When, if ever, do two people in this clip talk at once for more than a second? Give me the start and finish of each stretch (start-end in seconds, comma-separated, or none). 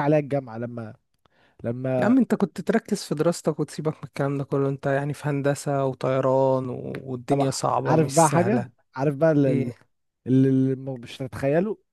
7.3-8.7